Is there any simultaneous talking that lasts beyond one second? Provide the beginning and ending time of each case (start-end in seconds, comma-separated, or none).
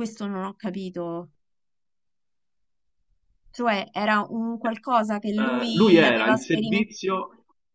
5.4-6.9